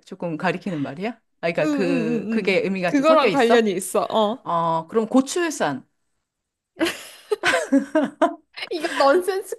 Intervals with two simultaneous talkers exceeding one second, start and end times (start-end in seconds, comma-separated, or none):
1.6-3.6